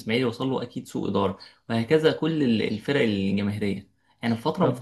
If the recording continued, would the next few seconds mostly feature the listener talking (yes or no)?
no